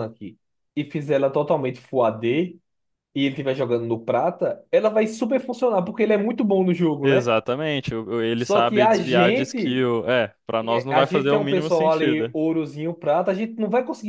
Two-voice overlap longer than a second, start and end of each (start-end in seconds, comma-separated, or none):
8.4-9.8, 10.9-12.3